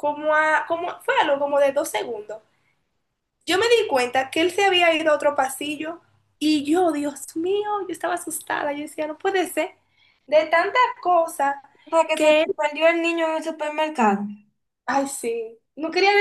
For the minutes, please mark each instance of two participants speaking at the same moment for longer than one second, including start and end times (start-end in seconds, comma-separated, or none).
none